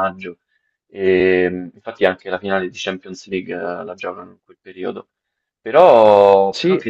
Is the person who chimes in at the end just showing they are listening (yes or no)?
yes